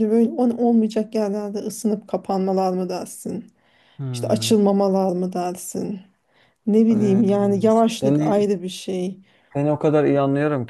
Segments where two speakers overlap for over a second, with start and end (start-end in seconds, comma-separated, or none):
none